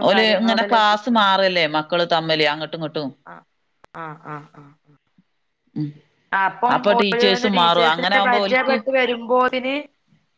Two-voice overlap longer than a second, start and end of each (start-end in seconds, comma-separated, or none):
6.8-8.8